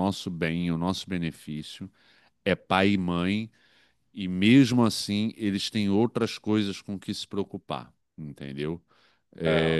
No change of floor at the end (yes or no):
yes